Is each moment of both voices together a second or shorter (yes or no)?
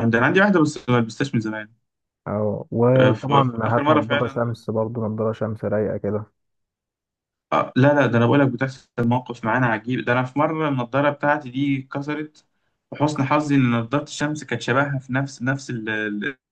no